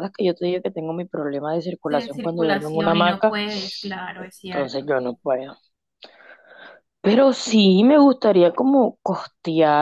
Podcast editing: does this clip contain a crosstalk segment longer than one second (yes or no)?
yes